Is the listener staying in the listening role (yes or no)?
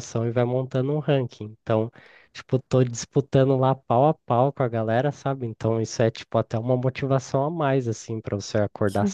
yes